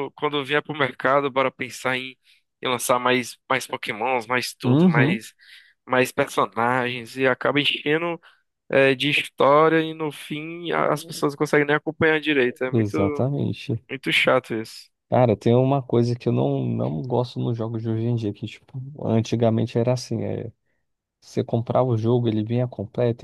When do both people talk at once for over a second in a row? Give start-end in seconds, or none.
none